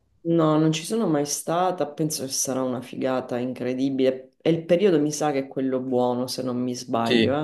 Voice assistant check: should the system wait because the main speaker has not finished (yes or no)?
no